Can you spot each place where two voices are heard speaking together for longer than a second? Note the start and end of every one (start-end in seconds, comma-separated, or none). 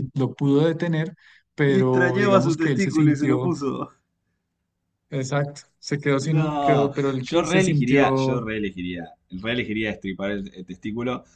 1.7-3.5, 6.2-8.5